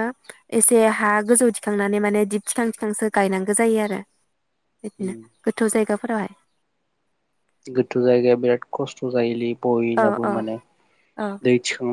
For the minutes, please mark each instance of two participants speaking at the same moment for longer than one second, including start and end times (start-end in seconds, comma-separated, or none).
none